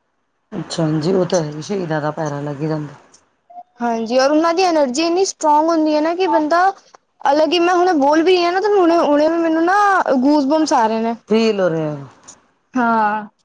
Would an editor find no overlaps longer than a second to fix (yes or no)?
yes